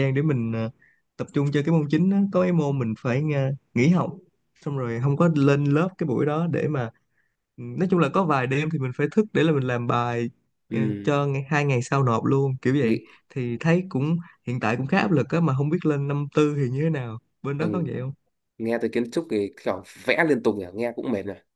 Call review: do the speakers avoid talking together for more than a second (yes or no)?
yes